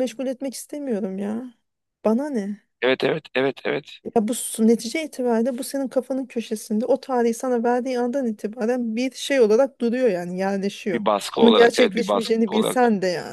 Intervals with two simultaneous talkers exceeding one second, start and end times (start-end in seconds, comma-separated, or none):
10.9-12.8